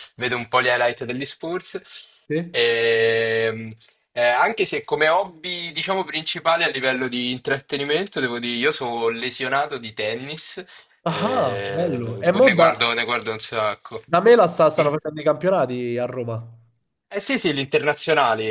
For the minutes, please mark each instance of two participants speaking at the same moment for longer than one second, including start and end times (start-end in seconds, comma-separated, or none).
11.1-12.8